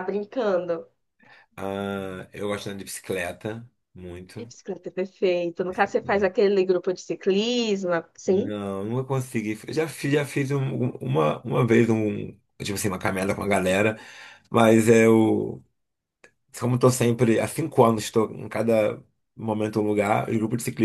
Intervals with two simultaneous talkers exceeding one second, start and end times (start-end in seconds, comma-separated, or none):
none